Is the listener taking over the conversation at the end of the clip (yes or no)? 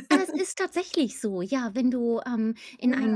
no